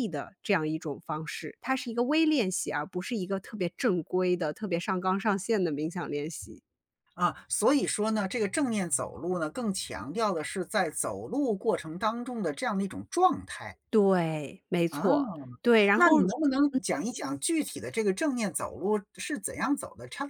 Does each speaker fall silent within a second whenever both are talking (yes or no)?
yes